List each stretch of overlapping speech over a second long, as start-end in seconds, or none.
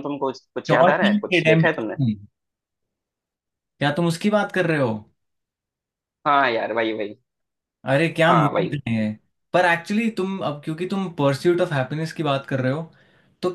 0.7-2.0